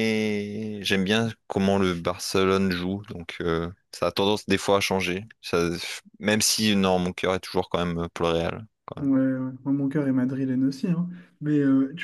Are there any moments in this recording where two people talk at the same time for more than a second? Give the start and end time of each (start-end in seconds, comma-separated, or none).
none